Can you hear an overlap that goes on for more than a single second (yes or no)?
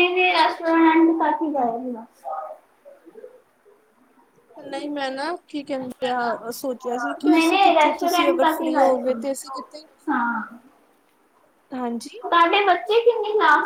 yes